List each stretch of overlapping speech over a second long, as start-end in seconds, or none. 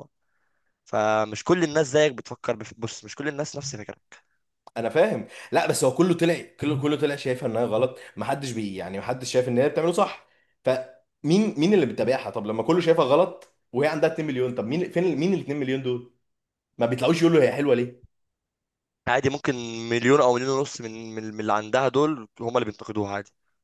none